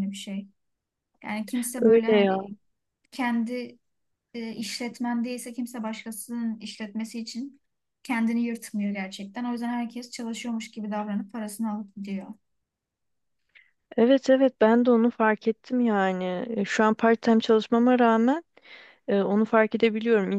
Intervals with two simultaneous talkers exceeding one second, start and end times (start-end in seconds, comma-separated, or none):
none